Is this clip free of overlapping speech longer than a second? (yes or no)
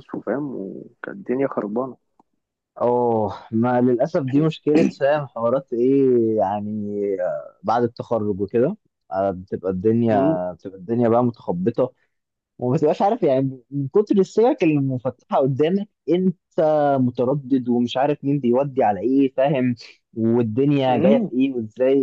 yes